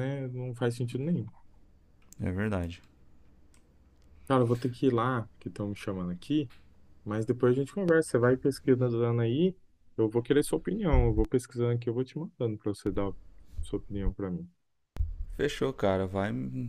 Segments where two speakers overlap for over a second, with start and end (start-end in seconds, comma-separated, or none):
none